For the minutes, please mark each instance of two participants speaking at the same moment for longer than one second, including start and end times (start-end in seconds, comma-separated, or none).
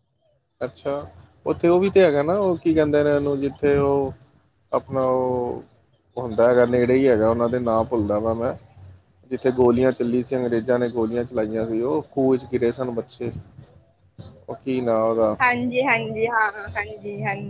none